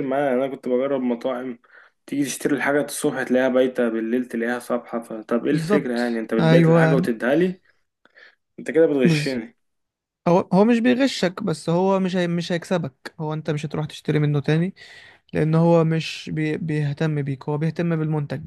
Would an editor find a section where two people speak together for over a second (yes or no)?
yes